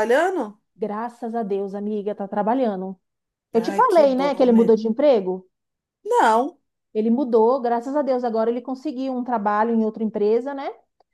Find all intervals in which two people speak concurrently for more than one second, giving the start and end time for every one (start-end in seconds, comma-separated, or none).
3.5-4.8